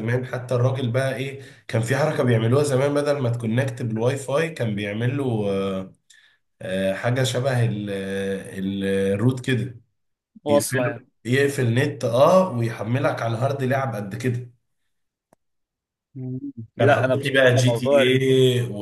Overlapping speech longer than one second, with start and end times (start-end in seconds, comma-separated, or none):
16.8-18.2